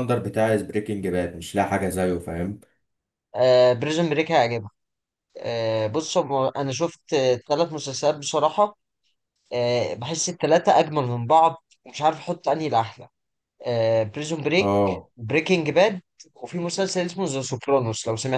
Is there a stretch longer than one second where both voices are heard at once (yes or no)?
no